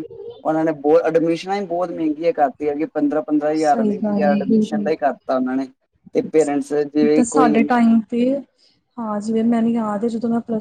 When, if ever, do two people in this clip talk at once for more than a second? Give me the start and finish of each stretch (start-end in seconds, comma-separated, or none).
3.6-4.9